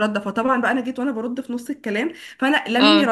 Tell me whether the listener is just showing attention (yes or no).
yes